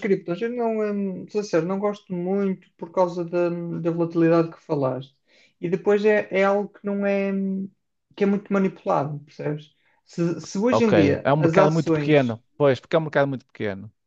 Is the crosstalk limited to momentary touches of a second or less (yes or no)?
no